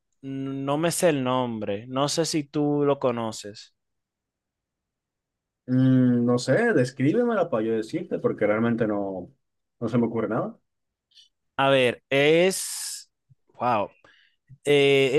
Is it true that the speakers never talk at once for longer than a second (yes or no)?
yes